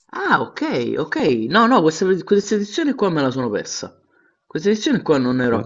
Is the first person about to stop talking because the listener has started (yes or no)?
no